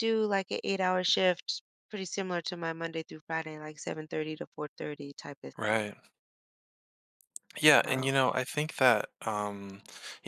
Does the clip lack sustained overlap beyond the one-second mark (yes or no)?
yes